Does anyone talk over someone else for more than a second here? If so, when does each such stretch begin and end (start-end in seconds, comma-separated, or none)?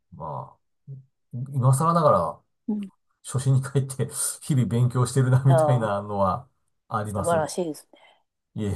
none